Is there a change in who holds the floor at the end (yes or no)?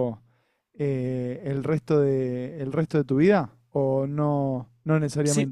yes